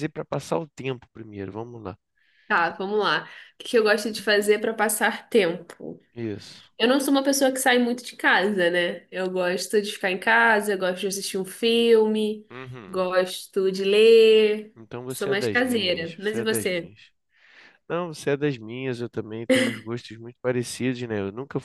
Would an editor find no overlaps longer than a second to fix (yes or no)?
no